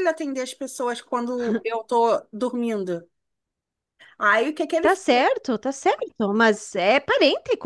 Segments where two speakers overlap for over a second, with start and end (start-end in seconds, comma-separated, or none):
none